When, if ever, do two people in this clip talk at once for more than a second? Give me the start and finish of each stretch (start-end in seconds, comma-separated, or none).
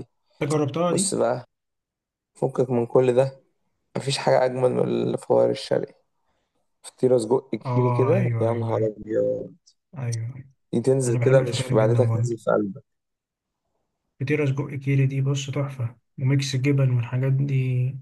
7.7-9.0, 11.1-12.3